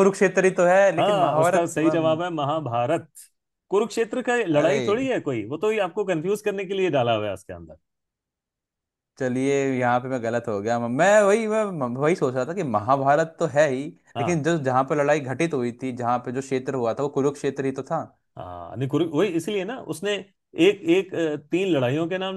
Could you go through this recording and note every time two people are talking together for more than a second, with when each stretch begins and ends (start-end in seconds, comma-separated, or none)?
1.0-2.2